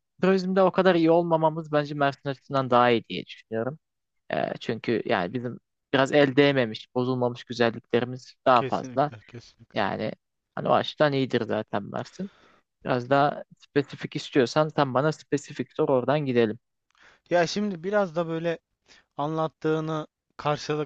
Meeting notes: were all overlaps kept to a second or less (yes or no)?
yes